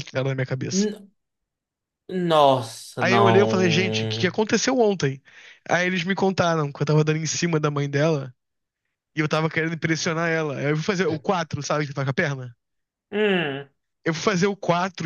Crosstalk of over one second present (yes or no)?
yes